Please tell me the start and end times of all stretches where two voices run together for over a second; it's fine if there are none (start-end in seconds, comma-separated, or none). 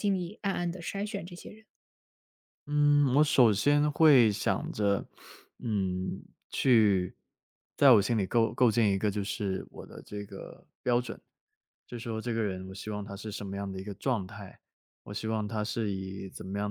none